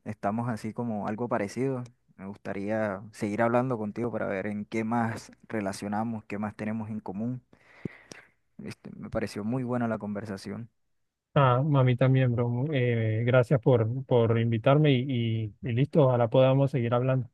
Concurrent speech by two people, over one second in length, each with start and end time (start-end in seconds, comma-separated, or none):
none